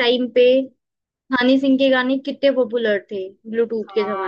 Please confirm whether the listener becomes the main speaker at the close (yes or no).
yes